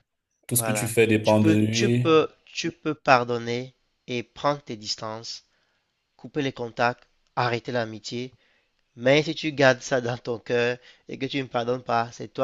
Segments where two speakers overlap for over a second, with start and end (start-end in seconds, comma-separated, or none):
0.5-2.1